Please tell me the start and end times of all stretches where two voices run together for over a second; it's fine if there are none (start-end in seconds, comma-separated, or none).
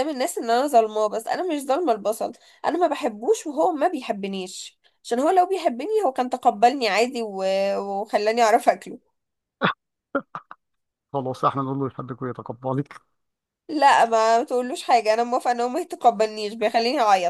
none